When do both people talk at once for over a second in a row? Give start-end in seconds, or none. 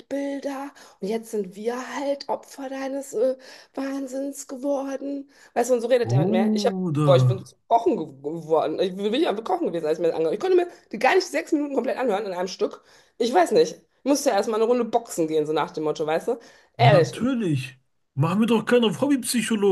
6.0-7.3